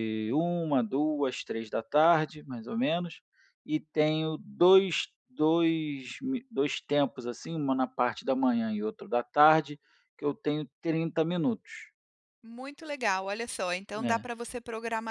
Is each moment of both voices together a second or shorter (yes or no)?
yes